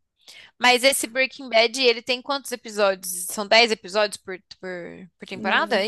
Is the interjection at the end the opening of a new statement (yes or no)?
yes